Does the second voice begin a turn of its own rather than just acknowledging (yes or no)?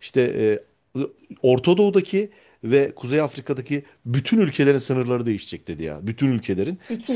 no